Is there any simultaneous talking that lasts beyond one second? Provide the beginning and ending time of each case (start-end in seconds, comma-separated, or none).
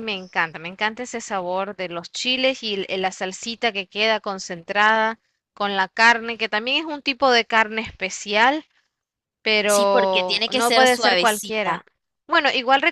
9.7-11.8